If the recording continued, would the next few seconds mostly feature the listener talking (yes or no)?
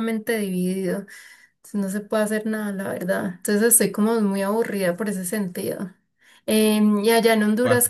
no